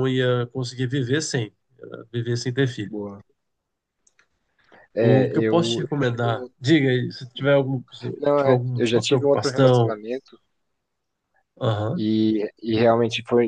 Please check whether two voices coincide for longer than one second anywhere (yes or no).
yes